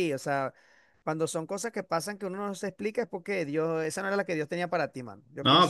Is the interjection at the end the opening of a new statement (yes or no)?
yes